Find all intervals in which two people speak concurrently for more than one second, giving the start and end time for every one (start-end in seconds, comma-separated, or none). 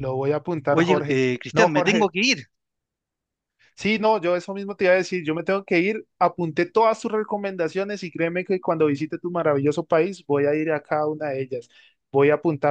0.7-2.1